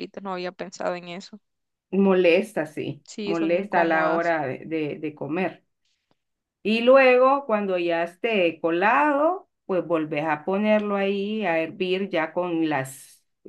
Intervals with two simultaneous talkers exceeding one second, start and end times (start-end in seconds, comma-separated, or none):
3.0-4.3